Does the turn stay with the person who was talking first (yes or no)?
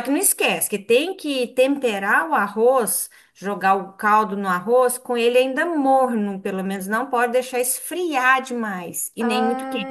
no